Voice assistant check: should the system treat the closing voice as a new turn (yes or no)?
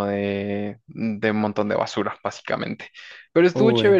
no